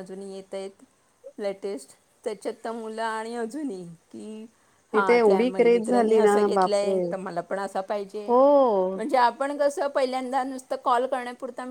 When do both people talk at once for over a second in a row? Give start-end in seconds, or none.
4.9-7.0